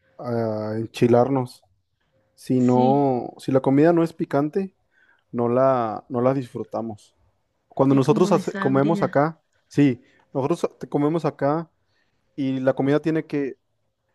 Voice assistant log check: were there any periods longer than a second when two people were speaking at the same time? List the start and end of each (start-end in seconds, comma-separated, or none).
7.9-9.2